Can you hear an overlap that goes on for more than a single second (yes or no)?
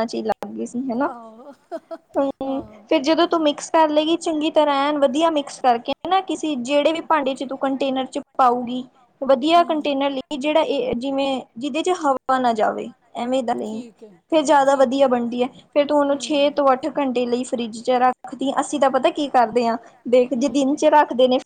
no